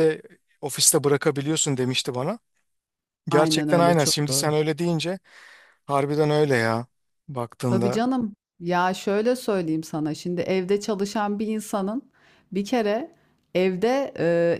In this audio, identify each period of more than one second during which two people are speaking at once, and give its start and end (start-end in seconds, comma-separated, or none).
3.3-4.5